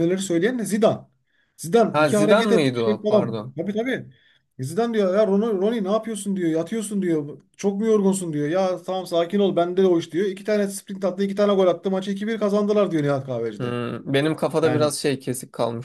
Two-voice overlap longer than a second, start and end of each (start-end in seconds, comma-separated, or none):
1.9-3.5